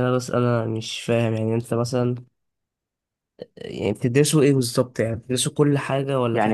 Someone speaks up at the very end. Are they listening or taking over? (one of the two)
taking over